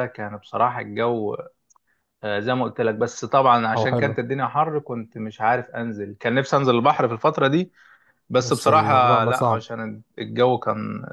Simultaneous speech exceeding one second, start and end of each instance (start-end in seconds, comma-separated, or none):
8.4-9.6